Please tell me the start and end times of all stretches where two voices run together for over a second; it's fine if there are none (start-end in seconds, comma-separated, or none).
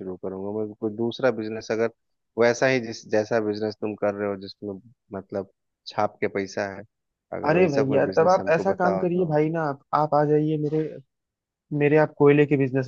7.5-9.3